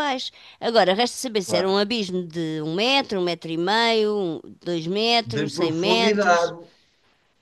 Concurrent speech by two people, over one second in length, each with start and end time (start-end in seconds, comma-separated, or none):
5.2-6.5